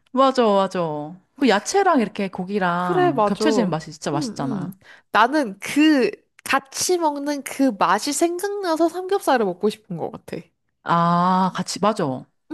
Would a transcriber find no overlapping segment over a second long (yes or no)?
no